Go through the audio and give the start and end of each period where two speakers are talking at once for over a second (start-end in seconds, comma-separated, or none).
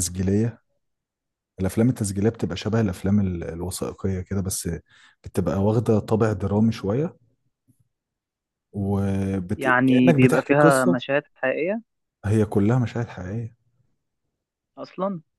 9.6-11.0